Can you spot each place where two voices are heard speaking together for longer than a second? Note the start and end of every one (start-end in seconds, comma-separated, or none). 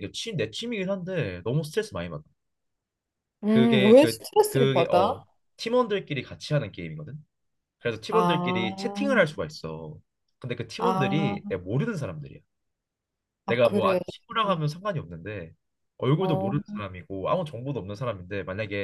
3.5-5.1